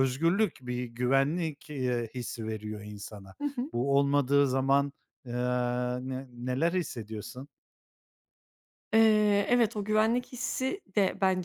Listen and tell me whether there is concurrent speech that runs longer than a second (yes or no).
no